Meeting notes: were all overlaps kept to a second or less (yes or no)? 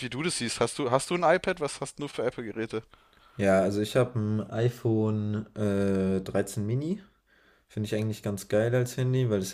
yes